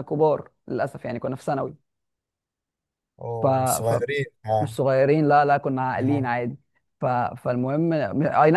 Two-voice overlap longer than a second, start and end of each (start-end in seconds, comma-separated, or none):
none